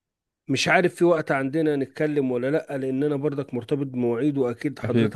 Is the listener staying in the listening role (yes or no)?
yes